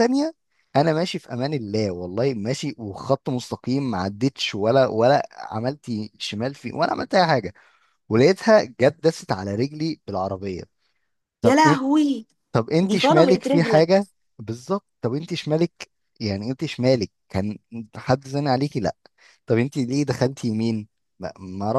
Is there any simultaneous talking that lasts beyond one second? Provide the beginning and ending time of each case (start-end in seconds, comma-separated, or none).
12.8-14.0